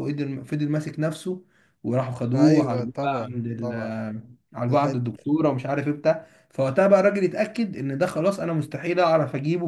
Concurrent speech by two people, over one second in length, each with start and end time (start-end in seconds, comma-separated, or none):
2.4-4.0